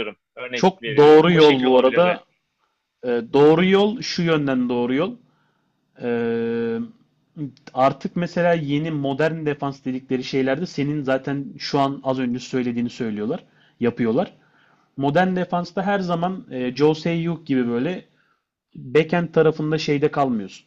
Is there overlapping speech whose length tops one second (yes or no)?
yes